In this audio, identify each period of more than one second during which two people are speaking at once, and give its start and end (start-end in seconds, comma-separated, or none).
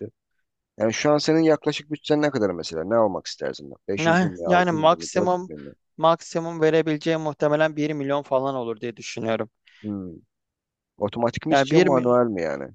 4.0-5.5